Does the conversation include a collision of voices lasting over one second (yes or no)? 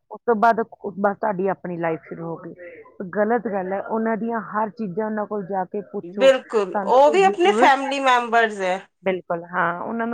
yes